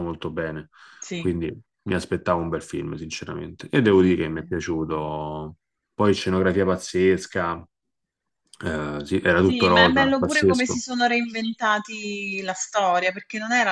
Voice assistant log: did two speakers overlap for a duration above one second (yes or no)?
yes